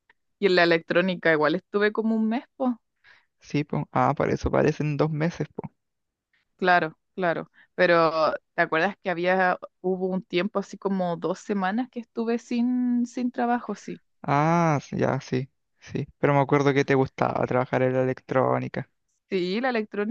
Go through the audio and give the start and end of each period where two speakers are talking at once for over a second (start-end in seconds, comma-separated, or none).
none